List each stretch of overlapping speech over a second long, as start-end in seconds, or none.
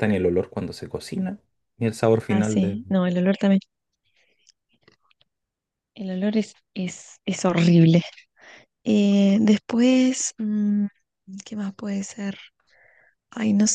none